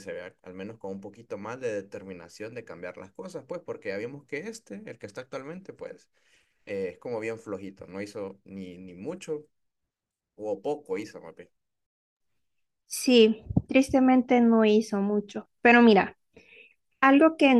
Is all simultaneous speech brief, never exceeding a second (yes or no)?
yes